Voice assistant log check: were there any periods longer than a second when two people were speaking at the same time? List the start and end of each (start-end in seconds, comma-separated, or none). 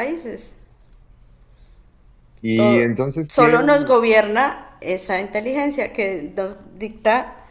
2.5-4.0